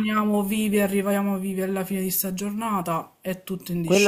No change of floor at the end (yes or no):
no